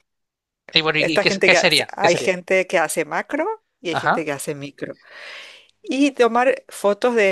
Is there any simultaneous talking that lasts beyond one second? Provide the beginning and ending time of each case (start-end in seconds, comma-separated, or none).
1.0-2.3